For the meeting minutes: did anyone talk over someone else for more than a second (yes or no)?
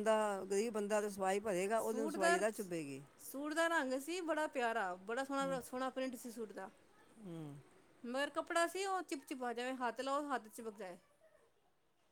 no